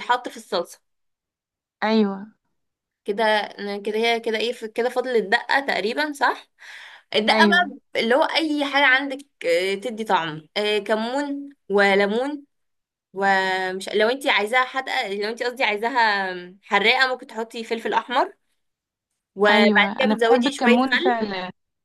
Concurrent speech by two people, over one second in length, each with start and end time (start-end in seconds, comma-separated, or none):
19.5-21.2